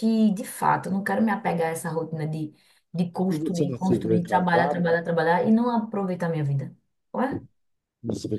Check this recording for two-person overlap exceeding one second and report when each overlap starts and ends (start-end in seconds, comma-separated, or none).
3.3-5.0